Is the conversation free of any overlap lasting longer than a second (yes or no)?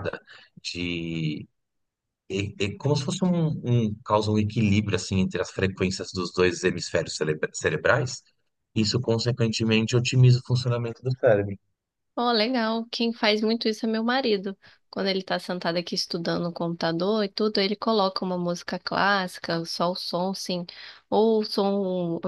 yes